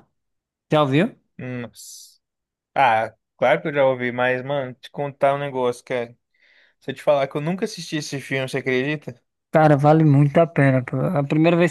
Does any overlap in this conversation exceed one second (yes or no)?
no